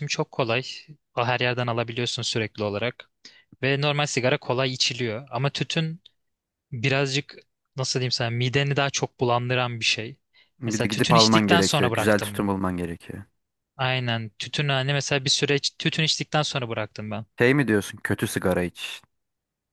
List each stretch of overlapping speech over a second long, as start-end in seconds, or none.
10.6-12.5